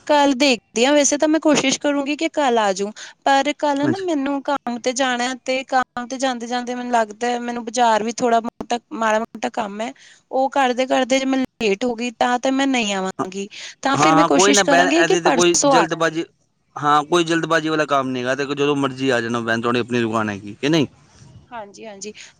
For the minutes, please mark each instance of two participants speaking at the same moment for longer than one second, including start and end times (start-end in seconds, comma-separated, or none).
14.0-16.2